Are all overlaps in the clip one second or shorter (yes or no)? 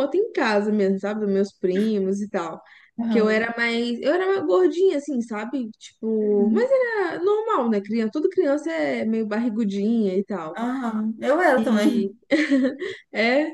yes